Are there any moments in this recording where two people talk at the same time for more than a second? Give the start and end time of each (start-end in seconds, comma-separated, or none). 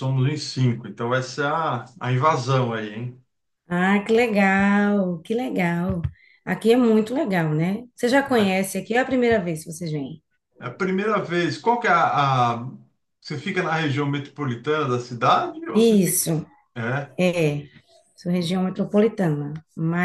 none